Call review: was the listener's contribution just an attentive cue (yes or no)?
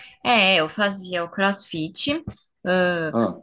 yes